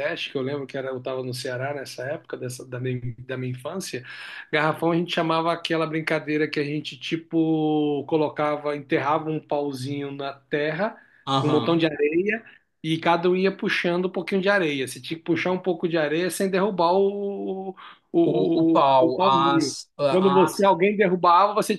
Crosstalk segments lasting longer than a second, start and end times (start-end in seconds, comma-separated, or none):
18.2-20.7